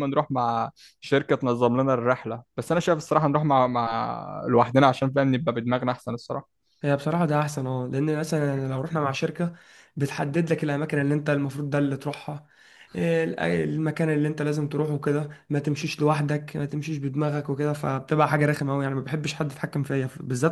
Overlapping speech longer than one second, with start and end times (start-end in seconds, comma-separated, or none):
none